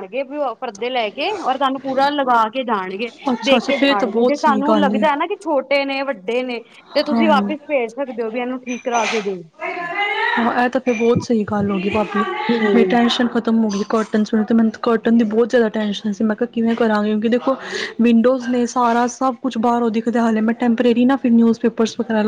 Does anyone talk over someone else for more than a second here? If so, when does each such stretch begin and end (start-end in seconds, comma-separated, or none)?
3.3-4.9